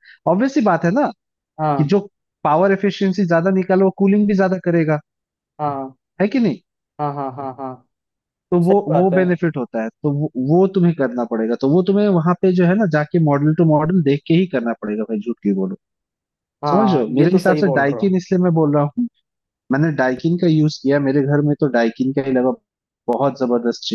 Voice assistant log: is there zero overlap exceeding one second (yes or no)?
no